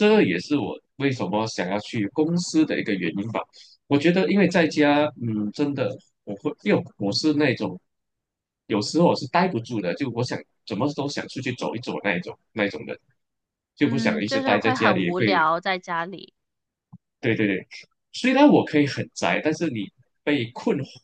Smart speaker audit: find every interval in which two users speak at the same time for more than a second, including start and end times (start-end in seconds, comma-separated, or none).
13.8-15.5